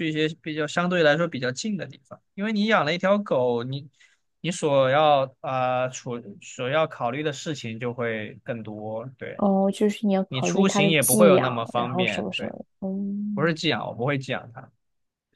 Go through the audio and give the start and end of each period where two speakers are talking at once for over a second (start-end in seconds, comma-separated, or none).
10.3-12.5